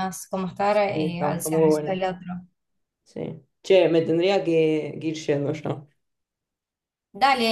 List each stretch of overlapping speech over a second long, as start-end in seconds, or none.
0.7-2.0